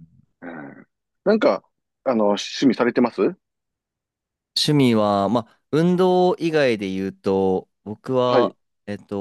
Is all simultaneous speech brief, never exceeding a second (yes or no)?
yes